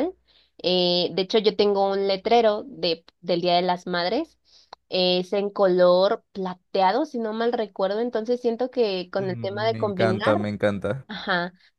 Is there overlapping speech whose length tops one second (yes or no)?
yes